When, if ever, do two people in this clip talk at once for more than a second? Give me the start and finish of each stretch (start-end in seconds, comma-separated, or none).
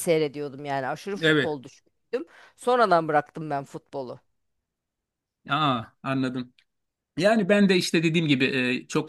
none